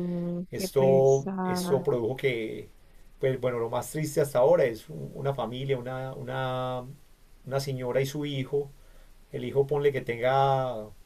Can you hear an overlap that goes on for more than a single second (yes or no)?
yes